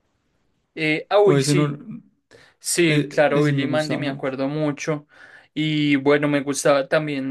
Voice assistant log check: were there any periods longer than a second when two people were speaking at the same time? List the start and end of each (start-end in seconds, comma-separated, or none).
2.9-4.3